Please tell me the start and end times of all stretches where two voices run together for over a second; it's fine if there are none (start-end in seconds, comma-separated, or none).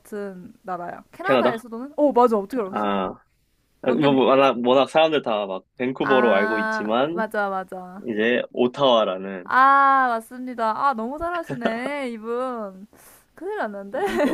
6.0-7.2